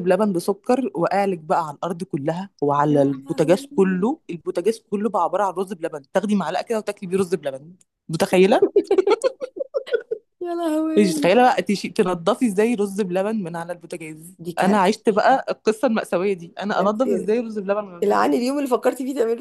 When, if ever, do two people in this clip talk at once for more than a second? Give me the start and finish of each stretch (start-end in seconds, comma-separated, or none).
2.9-4.1